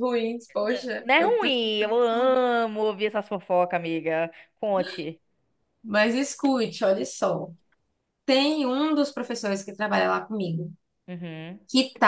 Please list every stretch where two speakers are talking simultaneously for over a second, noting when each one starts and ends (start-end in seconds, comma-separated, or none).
0.6-2.5